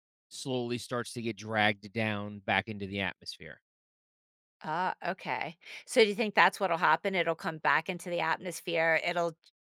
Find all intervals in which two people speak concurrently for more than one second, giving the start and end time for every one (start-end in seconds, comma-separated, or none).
none